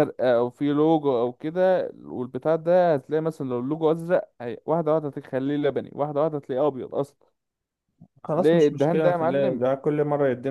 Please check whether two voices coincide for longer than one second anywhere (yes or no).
yes